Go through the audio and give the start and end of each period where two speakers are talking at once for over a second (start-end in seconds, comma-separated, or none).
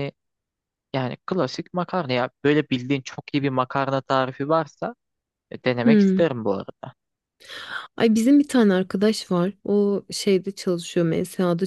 none